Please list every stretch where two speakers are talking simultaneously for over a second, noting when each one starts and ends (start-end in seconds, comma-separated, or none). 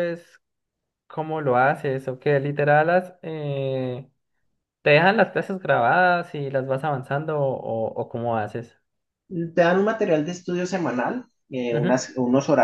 none